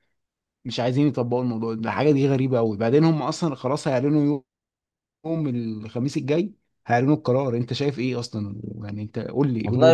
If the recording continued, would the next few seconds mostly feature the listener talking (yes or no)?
yes